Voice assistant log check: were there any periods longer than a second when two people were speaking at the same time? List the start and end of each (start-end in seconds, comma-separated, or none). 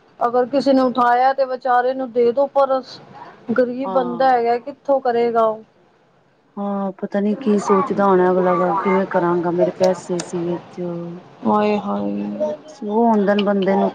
none